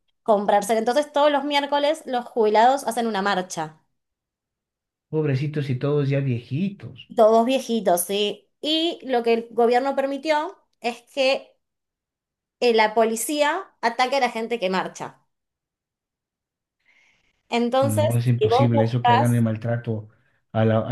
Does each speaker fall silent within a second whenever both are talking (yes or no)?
no